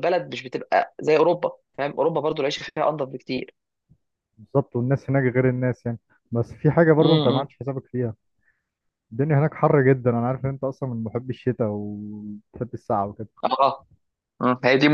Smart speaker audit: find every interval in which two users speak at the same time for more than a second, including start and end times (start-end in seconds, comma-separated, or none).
none